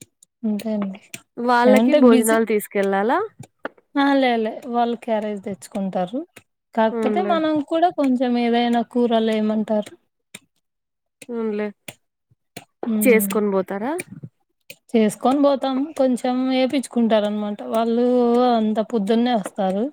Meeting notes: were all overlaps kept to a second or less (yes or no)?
yes